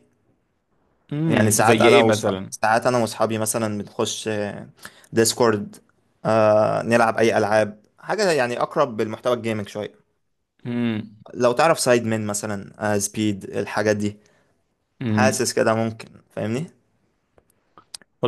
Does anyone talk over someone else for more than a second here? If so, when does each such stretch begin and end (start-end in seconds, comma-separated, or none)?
1.2-2.5